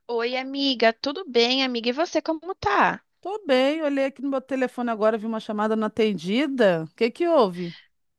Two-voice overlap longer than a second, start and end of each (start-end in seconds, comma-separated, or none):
none